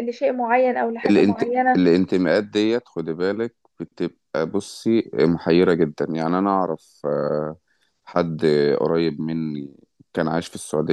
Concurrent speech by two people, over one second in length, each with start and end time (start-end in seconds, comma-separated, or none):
none